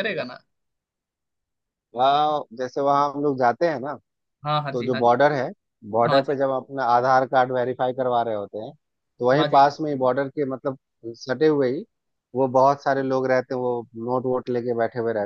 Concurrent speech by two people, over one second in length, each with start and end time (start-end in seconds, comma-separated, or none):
none